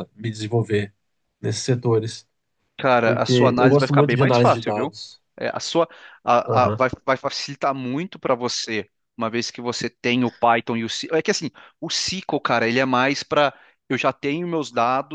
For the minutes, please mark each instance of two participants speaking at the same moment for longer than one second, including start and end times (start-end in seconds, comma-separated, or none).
3.0-5.0